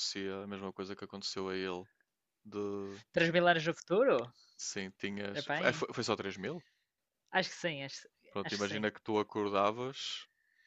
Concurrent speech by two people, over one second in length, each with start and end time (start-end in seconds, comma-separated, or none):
none